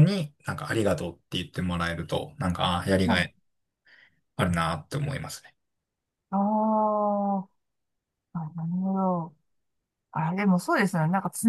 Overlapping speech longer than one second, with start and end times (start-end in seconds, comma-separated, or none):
none